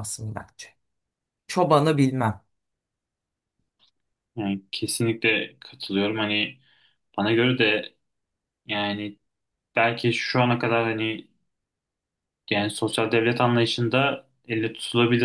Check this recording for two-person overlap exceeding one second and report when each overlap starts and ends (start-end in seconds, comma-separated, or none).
none